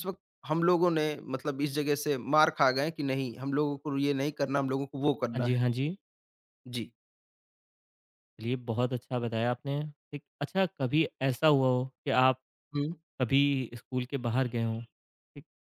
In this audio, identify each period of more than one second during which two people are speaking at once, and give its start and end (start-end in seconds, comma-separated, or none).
none